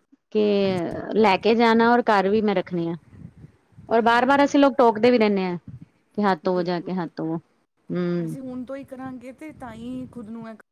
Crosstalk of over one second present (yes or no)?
no